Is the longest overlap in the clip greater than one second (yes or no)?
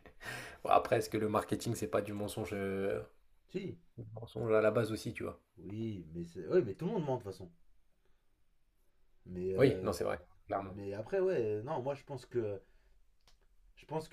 no